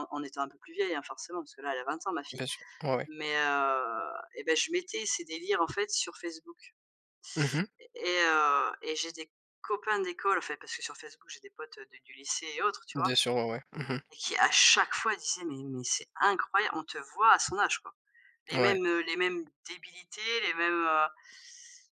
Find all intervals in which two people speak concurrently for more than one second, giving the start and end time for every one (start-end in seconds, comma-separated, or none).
none